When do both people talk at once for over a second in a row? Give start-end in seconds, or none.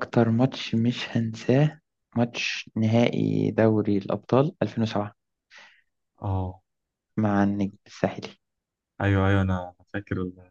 none